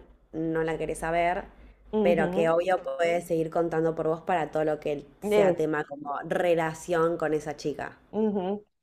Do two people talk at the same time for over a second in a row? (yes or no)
no